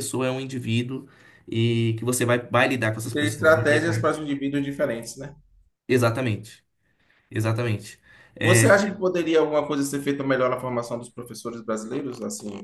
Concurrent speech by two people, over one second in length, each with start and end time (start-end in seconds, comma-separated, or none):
3.0-4.2